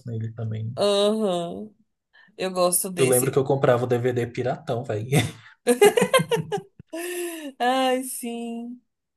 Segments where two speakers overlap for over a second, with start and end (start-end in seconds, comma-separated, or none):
none